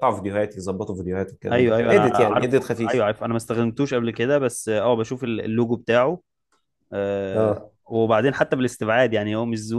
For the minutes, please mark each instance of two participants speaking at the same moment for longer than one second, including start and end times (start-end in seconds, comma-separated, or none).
1.5-3.0